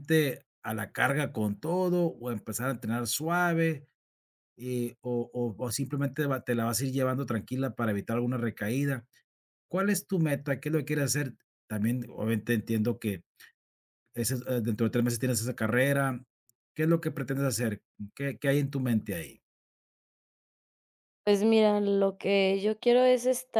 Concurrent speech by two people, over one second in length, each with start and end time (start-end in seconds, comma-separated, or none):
none